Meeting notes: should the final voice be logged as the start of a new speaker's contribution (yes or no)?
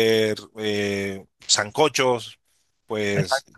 no